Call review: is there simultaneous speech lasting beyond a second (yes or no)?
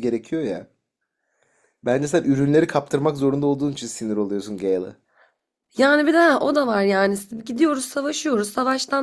no